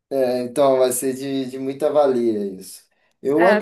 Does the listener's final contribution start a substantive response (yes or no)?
no